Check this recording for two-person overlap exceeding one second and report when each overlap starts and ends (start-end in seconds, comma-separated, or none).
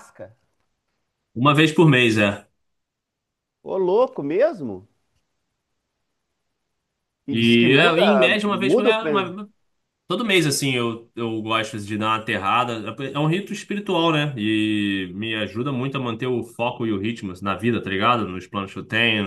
7.3-9.0